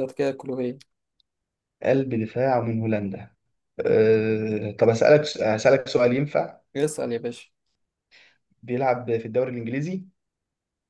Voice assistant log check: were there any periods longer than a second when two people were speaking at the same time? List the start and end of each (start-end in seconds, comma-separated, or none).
none